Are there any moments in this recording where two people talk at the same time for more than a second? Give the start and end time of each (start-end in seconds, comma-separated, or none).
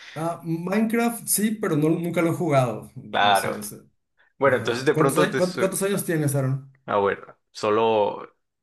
4.5-5.7